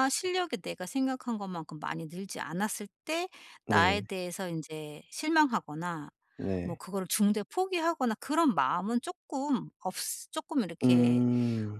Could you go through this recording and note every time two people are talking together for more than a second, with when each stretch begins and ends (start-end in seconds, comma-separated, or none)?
none